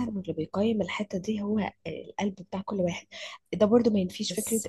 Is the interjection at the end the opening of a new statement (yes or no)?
no